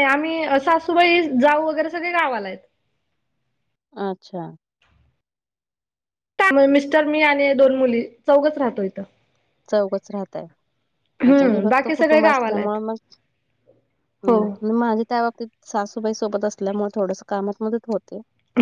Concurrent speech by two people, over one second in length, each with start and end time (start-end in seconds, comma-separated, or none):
11.2-12.8